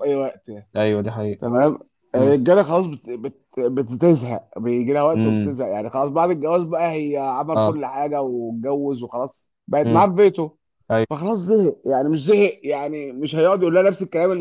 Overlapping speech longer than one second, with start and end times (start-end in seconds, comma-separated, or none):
none